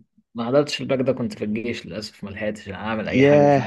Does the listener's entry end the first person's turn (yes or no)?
yes